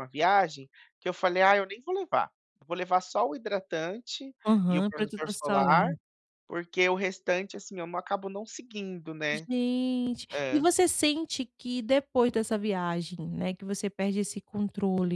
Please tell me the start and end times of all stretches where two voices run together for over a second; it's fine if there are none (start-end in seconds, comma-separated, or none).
4.4-5.9